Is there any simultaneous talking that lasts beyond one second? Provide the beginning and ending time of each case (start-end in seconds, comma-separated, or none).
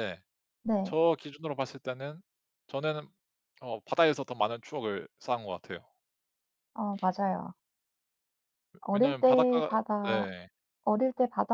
8.9-10.3